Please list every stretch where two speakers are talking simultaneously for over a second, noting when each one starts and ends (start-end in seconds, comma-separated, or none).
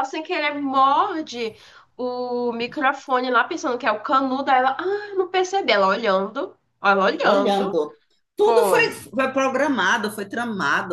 none